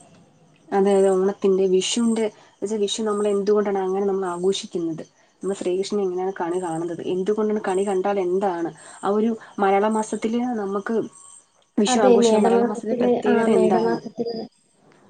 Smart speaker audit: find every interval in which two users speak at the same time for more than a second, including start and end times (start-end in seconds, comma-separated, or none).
11.9-14.0